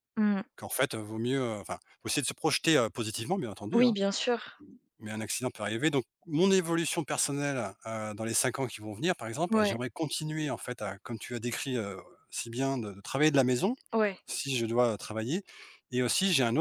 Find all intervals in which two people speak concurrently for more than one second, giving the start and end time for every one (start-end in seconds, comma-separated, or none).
none